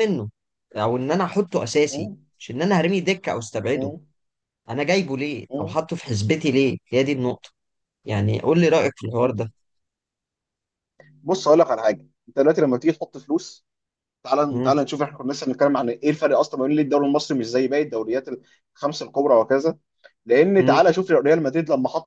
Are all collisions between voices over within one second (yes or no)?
yes